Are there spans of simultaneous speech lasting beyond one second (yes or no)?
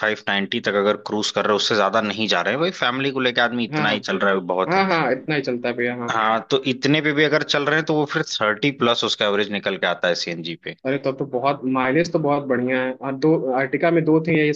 no